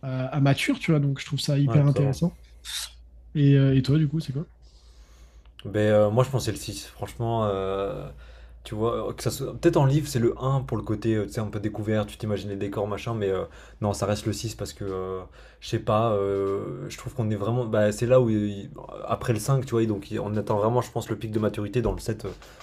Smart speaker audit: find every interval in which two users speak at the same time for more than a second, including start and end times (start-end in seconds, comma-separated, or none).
none